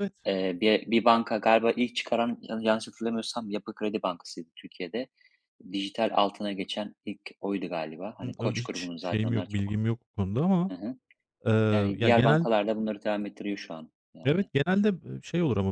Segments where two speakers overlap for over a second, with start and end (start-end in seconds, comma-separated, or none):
8.2-9.8